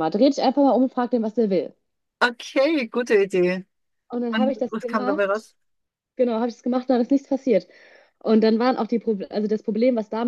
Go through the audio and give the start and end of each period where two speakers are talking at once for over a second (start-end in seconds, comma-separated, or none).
4.3-5.5